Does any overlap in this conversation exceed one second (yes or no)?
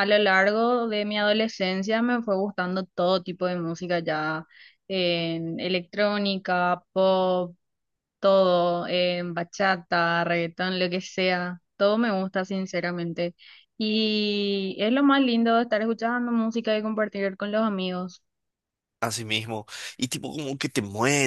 no